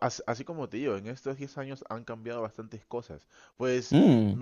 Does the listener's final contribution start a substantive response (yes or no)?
no